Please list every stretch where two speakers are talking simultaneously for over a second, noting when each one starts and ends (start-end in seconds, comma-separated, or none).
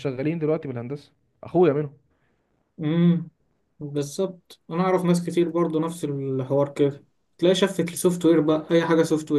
none